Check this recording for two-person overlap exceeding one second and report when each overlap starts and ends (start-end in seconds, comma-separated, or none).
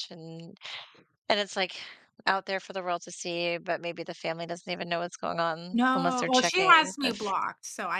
5.7-7.3